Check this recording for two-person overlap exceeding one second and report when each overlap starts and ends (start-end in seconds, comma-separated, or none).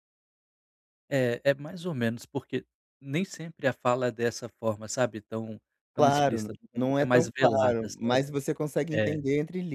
5.9-8.3